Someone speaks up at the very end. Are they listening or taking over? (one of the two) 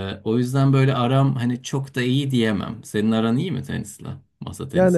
taking over